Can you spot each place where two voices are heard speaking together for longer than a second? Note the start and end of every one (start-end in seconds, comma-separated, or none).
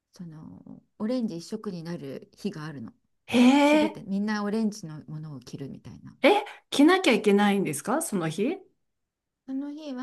none